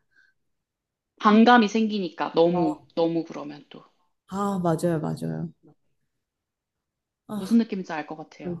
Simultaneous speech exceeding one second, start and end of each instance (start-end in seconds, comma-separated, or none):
none